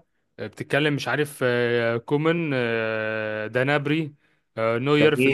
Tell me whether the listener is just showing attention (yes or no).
yes